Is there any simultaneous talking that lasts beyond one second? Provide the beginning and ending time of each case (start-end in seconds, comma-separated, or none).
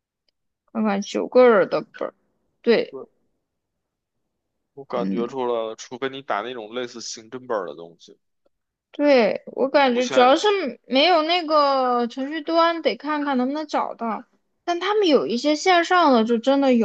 none